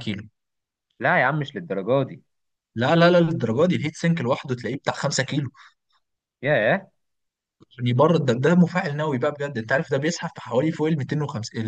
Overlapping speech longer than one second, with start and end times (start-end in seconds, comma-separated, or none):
none